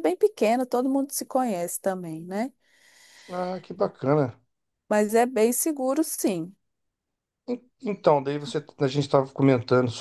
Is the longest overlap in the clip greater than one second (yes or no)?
no